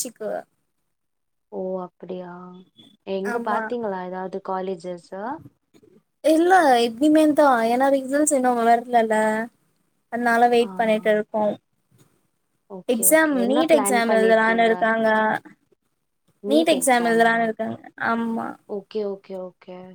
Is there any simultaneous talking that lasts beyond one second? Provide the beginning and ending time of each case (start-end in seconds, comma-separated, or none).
12.9-14.7